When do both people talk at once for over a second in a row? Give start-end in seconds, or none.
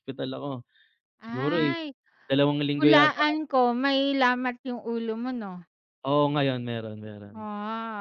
none